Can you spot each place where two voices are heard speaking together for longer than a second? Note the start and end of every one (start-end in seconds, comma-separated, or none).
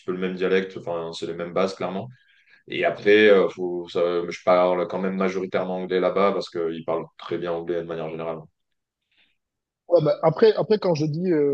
none